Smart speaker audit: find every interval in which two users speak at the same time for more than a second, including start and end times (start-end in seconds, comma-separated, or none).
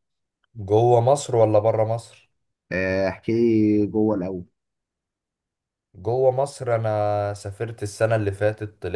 none